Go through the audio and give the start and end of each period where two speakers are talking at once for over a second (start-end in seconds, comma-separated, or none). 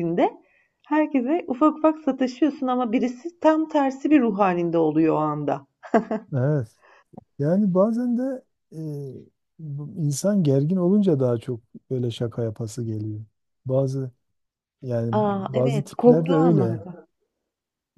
15.1-16.8